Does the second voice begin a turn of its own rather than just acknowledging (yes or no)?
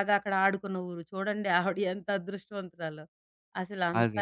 no